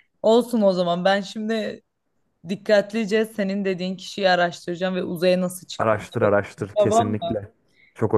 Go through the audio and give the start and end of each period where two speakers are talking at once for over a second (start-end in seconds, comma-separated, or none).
5.8-7.3